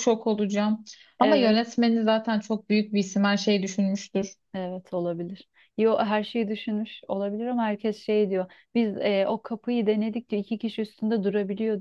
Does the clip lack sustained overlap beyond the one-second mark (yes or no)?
yes